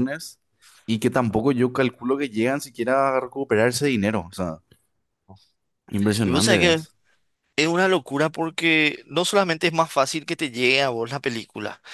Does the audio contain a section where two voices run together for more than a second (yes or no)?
no